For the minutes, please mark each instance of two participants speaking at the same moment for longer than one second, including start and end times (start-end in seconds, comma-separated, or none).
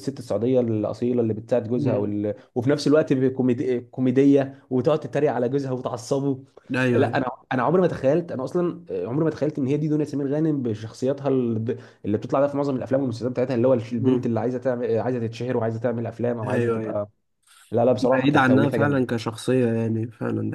17.9-19.2